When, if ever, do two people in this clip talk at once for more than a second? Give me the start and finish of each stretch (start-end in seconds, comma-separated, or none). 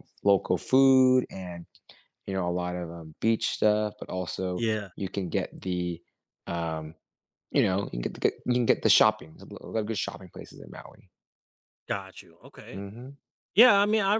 none